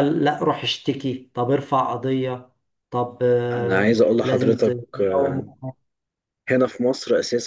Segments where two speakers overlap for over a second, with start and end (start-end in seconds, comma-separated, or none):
3.5-5.4